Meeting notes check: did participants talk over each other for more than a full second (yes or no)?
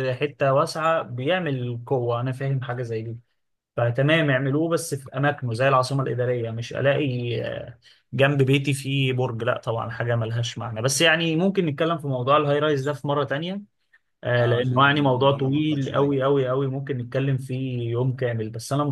yes